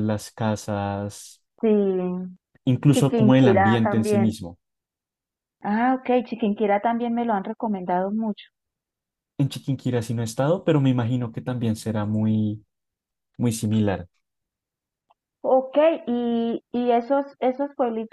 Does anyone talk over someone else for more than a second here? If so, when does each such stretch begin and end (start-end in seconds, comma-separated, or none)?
2.9-4.3